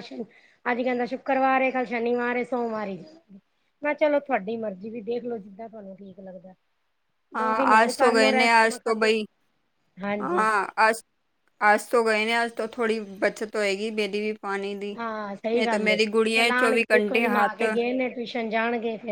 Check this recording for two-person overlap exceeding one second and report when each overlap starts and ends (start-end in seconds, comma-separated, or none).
7.4-9.1, 15.6-17.6